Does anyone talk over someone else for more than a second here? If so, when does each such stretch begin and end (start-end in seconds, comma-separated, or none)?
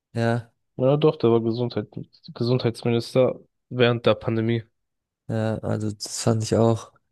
none